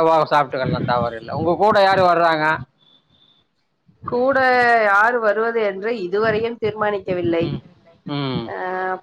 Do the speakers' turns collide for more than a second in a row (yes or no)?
no